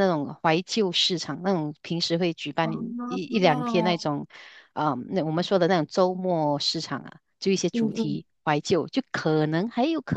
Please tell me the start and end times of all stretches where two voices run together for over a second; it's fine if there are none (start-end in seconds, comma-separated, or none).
2.6-4.0